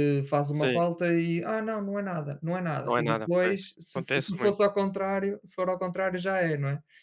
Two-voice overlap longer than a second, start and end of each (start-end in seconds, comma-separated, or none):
2.8-4.6